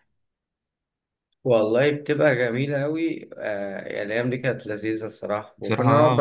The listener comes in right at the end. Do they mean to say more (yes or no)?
no